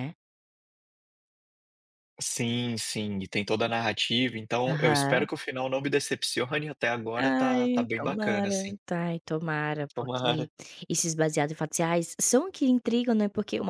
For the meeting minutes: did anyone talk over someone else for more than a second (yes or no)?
yes